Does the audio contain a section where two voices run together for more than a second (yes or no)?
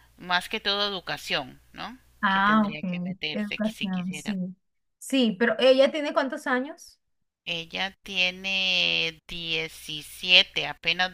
yes